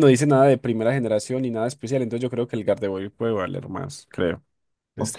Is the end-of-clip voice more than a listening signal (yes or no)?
yes